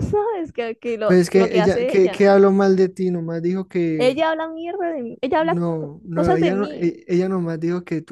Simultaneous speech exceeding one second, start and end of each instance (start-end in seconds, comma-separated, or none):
1.0-2.2, 5.3-6.9